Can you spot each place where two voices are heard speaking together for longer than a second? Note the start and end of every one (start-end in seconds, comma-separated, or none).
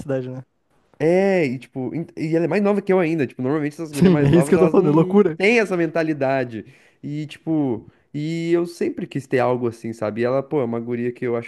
3.9-5.4